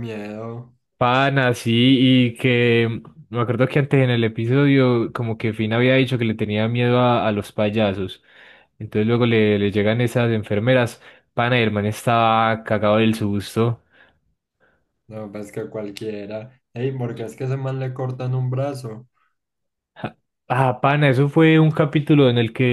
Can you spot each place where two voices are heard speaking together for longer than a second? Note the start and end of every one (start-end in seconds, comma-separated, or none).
none